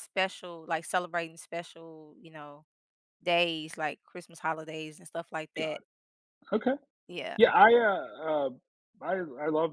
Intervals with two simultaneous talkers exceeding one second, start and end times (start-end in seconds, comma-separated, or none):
none